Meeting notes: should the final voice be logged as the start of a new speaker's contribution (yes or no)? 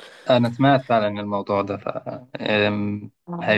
no